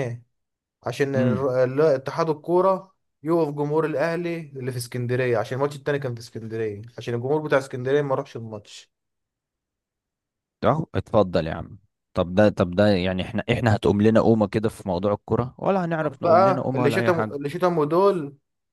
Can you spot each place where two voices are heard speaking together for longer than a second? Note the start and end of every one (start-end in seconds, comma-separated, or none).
16.0-17.4